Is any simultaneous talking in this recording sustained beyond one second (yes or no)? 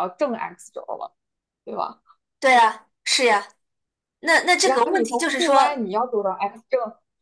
yes